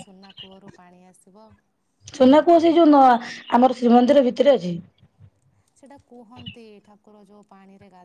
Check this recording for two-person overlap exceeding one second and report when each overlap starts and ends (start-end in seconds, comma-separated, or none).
none